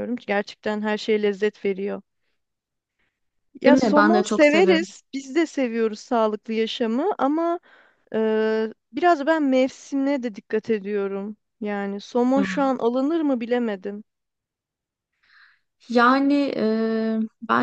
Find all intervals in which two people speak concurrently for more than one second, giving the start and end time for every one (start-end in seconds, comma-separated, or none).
3.6-4.9